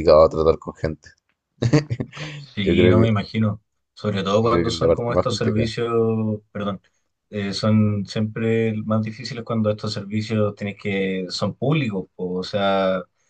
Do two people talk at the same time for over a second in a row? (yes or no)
yes